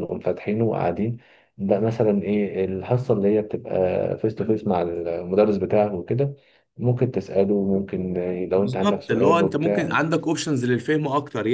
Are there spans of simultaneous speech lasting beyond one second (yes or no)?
yes